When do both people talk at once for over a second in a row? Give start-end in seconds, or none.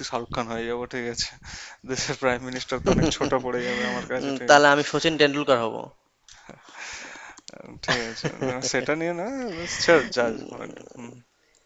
none